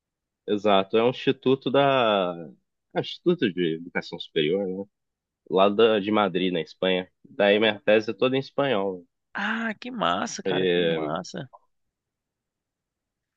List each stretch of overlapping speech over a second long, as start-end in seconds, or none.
none